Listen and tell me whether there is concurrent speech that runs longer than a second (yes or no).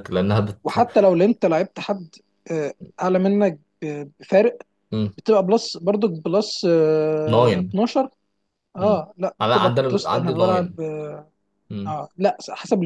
yes